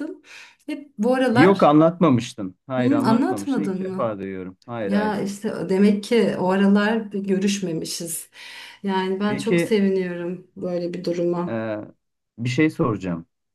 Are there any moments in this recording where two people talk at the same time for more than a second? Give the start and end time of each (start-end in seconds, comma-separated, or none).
2.8-4.2